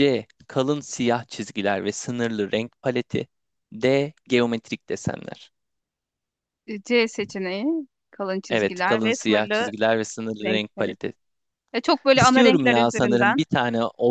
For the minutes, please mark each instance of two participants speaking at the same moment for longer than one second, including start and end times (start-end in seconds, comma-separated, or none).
8.5-9.7, 12.1-13.4